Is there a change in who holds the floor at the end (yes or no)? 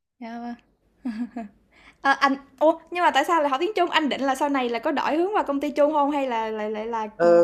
yes